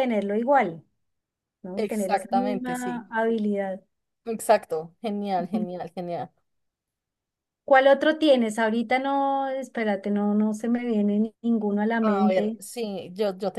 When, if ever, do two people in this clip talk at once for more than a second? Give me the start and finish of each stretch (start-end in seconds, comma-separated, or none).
1.8-3.0